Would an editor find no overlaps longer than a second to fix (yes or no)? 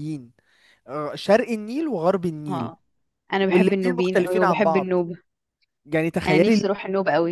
no